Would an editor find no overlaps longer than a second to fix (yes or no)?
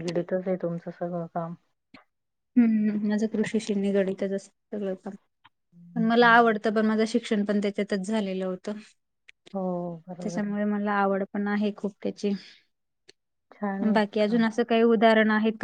yes